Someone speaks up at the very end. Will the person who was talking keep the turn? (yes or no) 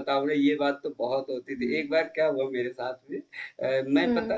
yes